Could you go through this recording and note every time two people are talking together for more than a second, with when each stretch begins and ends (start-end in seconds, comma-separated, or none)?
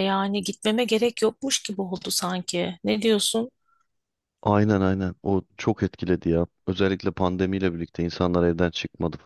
none